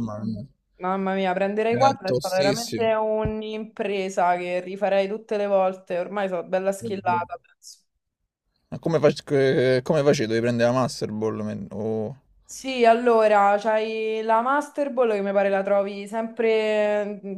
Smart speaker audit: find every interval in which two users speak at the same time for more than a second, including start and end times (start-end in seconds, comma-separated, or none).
1.7-2.9